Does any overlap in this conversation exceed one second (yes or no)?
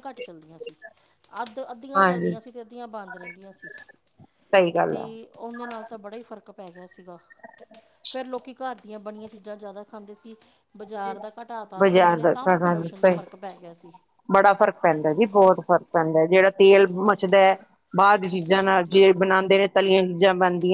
yes